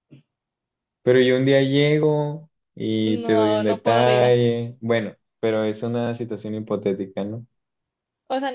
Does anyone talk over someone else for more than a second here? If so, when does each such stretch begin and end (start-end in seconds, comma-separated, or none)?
3.0-4.4